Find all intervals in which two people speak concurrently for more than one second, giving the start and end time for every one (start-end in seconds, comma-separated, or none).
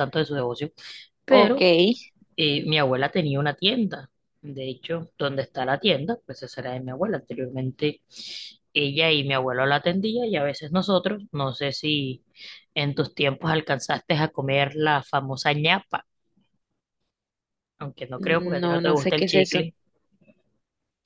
18.2-19.6